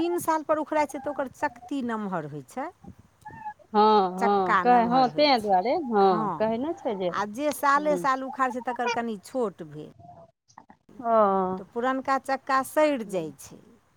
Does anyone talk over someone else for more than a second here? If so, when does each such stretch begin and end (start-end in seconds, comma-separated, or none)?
4.2-5.7